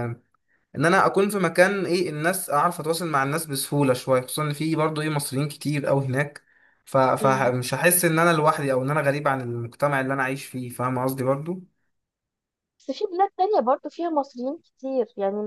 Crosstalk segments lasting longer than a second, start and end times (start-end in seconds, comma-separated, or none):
none